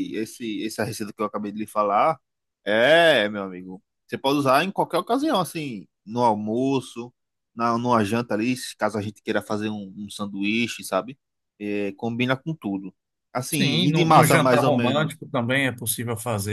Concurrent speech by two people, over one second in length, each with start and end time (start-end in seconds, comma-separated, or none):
13.5-15.2